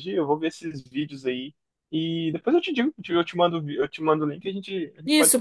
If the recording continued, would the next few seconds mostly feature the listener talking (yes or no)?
yes